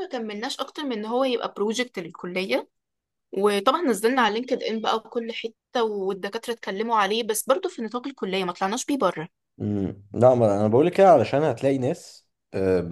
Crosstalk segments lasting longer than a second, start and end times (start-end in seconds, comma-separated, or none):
none